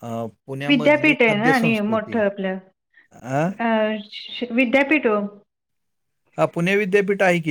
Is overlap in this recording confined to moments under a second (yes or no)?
no